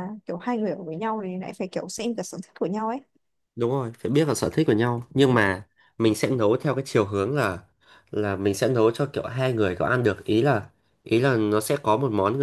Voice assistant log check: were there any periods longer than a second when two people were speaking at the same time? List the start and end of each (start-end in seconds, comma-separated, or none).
none